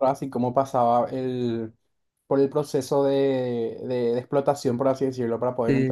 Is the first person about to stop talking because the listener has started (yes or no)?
yes